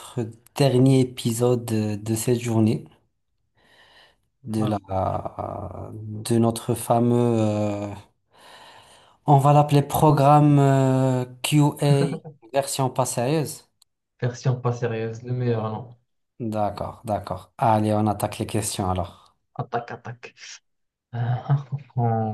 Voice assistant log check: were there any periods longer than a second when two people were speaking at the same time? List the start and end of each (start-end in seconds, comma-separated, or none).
none